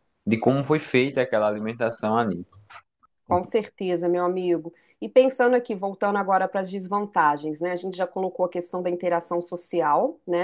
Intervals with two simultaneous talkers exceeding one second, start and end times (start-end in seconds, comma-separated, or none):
none